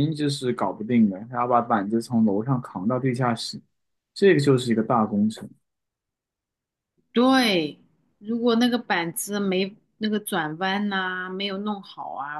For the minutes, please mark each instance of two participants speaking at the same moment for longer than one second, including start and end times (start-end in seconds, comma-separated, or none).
none